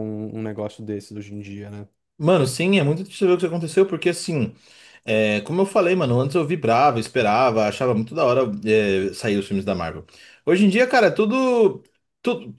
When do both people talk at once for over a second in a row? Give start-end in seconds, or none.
none